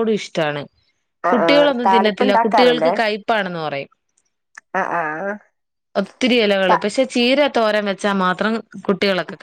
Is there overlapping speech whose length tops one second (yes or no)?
yes